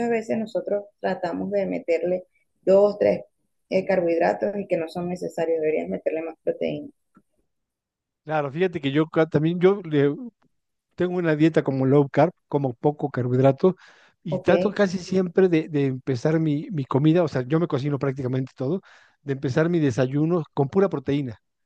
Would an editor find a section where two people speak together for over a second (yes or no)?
no